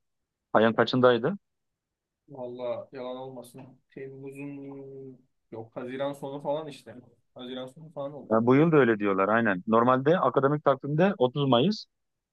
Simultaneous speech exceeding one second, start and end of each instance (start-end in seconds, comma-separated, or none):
none